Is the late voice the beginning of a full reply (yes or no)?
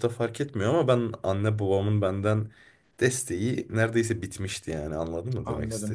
yes